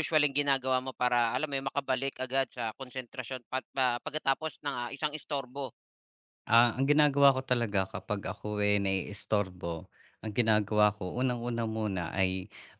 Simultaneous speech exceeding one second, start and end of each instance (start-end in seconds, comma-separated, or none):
none